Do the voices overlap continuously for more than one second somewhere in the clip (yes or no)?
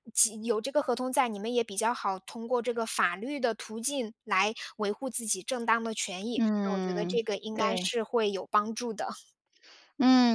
yes